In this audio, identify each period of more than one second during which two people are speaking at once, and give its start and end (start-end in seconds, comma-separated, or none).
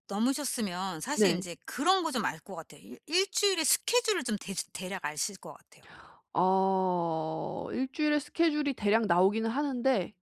none